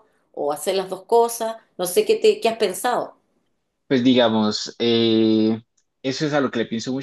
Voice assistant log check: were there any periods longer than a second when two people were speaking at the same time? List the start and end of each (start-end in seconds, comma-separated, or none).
none